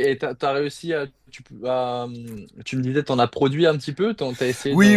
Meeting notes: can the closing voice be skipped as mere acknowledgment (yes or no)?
no